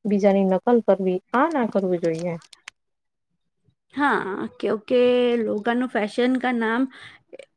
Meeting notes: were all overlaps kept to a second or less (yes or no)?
yes